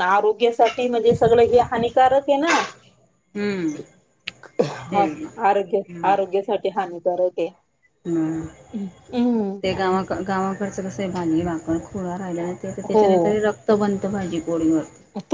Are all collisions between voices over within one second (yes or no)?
yes